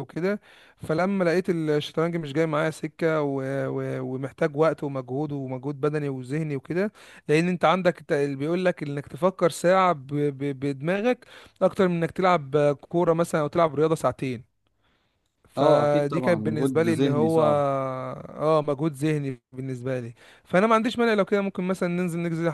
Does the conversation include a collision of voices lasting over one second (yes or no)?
yes